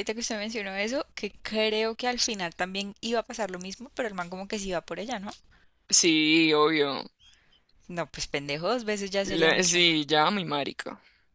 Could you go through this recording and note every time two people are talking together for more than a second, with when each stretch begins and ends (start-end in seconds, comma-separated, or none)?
none